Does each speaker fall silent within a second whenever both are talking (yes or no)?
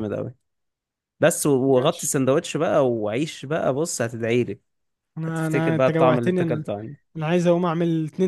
no